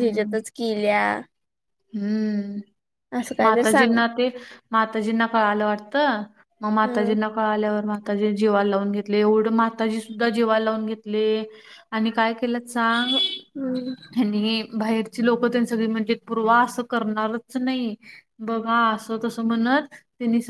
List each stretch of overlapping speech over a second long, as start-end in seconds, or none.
none